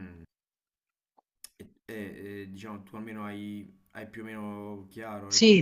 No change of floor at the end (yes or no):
no